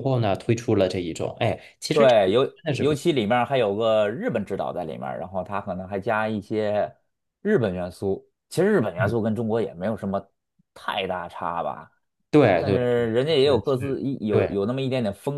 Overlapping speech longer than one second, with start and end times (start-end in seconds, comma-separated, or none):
12.6-14.6